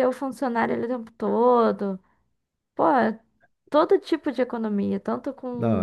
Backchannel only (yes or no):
yes